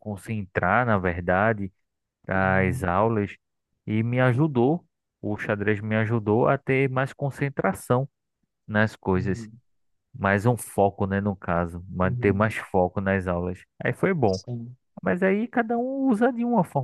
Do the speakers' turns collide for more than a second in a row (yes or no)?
no